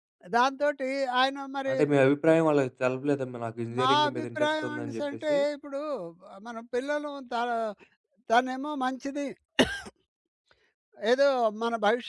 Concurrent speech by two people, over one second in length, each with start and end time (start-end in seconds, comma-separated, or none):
3.8-5.3